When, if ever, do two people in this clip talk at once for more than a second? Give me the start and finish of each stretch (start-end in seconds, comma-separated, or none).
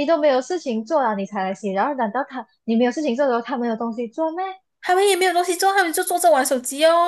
none